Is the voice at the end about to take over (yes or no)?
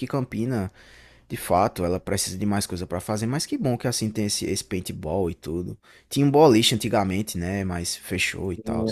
no